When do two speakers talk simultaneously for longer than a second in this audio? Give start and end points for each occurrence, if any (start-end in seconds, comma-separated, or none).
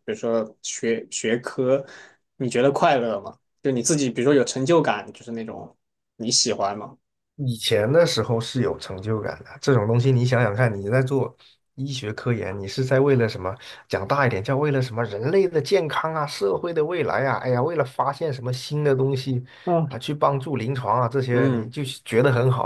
none